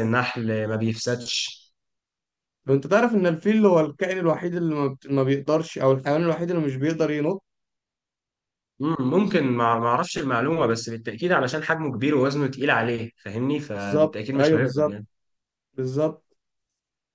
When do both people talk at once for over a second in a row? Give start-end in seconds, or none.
13.8-15.0